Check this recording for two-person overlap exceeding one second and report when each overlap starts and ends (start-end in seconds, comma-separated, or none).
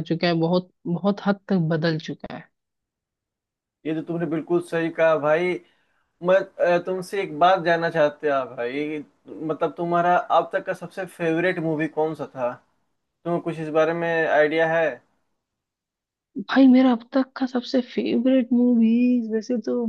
none